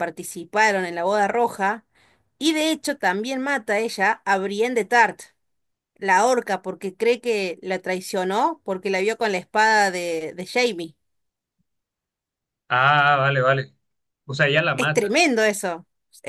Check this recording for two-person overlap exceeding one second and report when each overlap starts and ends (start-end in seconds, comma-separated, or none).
none